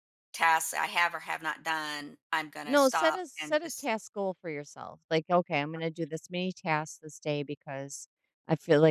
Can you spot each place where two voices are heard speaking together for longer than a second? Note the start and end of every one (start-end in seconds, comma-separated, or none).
2.6-3.9